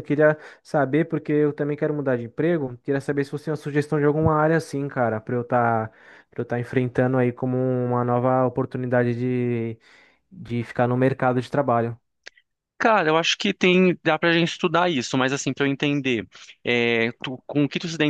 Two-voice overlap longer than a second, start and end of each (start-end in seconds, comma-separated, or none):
none